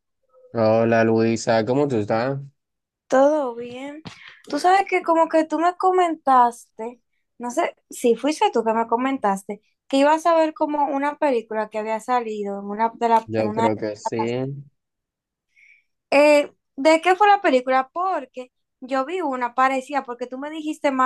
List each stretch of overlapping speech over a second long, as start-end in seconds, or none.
none